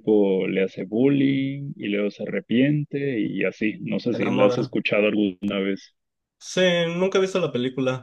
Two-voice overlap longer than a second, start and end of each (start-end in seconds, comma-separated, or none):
none